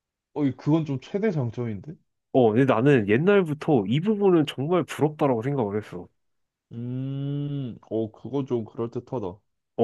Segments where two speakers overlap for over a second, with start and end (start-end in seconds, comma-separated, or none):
none